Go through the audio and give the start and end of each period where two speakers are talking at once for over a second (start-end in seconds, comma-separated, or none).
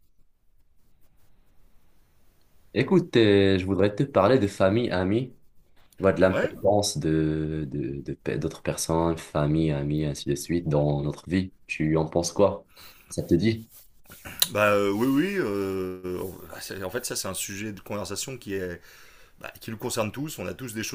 none